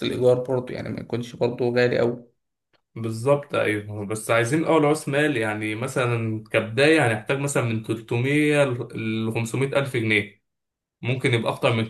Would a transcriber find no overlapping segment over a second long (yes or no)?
yes